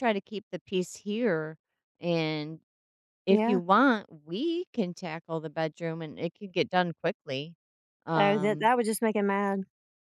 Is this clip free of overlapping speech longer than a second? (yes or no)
yes